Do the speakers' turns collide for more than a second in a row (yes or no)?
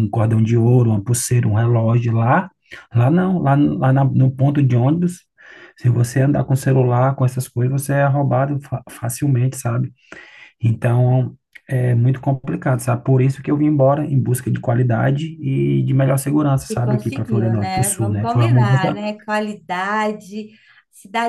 yes